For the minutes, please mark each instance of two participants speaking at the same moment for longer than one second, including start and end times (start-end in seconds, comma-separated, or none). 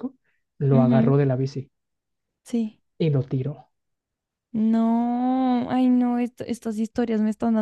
none